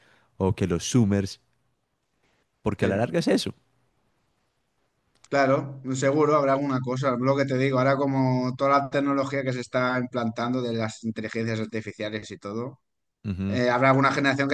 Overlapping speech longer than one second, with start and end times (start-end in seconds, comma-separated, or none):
none